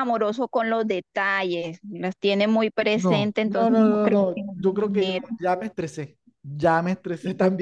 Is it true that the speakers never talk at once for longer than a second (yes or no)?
no